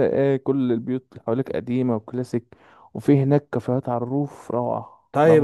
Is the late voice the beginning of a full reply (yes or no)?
yes